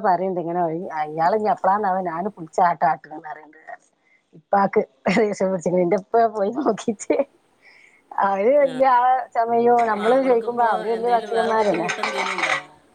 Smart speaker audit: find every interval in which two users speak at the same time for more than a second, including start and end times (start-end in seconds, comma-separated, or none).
10.0-11.9